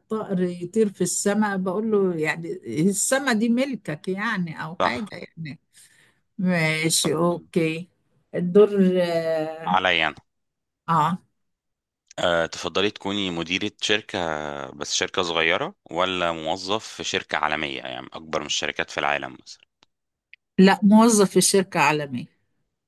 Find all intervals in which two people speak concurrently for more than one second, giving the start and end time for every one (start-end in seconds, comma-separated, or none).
none